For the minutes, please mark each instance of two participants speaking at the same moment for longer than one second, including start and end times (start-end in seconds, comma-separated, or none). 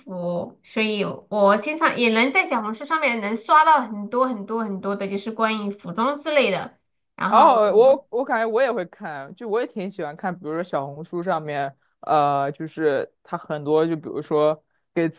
none